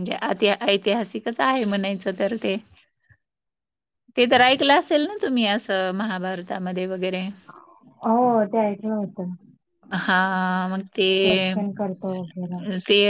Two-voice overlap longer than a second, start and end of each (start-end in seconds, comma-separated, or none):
none